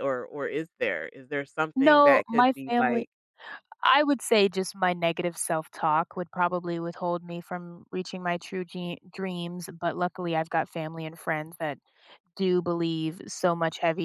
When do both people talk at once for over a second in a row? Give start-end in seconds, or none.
1.8-3.0